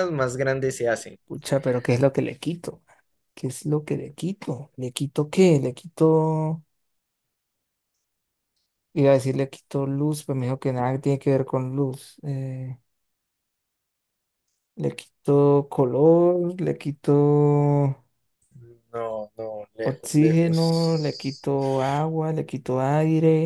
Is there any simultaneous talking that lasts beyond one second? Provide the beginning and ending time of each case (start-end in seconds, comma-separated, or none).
19.8-21.5